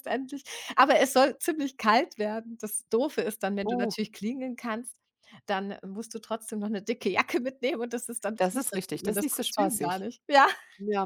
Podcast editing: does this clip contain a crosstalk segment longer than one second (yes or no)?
yes